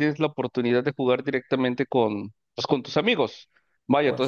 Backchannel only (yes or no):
yes